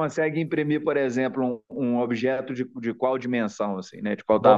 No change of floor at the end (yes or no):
no